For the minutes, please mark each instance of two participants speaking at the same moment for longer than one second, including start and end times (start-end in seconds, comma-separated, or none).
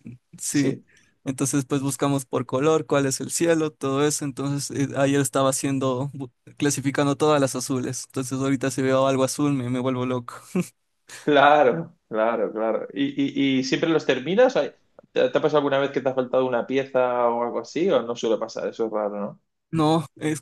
none